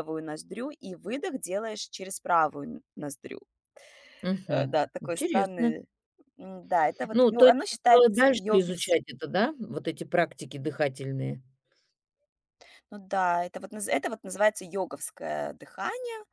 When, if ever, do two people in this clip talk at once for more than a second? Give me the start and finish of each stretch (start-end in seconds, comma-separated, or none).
4.5-5.8, 7.1-8.9